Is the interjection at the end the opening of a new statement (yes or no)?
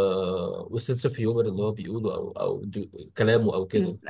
yes